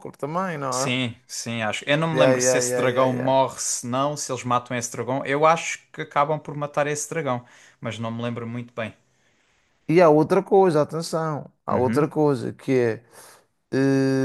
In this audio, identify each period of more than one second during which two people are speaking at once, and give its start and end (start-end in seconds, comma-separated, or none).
2.1-3.3